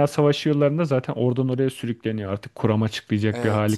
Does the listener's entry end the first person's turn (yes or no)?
yes